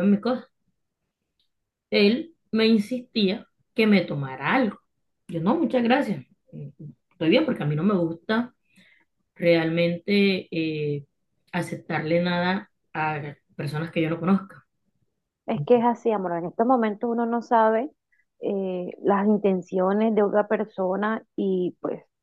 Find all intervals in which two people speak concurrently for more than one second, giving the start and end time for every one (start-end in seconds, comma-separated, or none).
none